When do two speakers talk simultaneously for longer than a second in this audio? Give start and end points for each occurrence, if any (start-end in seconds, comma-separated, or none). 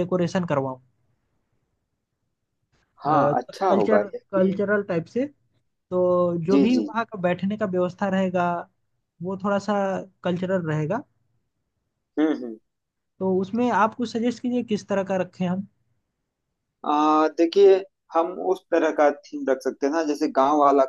3.1-4.6